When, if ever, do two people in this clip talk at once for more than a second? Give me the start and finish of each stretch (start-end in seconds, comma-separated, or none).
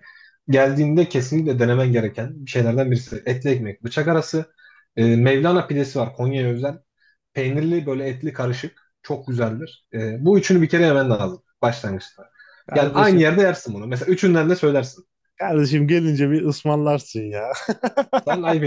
none